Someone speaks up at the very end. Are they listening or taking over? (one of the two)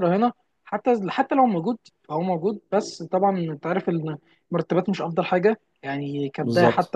taking over